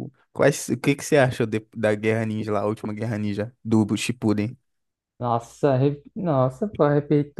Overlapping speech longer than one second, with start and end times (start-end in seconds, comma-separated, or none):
none